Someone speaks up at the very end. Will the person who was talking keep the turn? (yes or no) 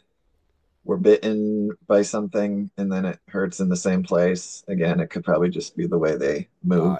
no